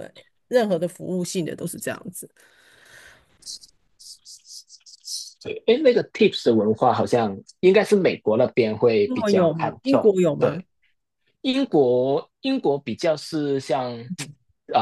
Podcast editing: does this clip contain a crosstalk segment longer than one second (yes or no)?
yes